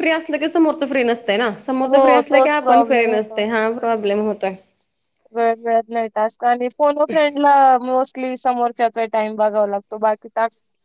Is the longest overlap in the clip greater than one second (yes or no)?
yes